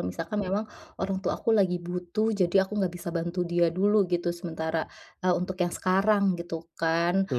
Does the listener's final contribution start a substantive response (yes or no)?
no